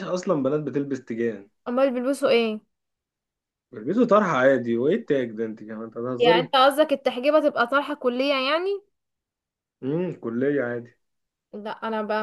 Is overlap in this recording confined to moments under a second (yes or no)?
yes